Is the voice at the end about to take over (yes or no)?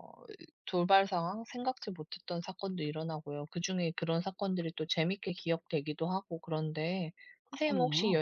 no